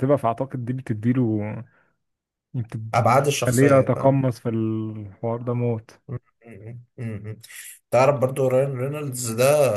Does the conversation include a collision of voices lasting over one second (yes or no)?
yes